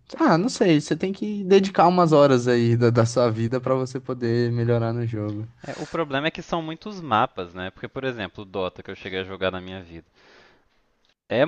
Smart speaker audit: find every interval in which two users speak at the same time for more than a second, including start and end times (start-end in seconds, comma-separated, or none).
none